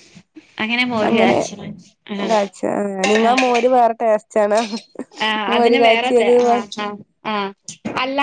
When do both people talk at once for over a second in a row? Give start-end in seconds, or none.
none